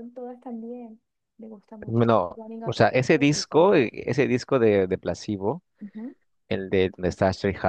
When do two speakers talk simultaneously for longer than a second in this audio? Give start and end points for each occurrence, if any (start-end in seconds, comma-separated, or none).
1.9-3.9